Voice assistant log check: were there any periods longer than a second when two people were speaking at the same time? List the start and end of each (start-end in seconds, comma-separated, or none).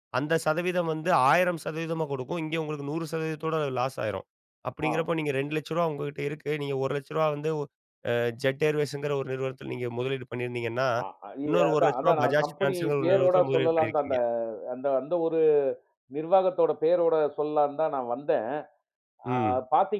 11.5-14.2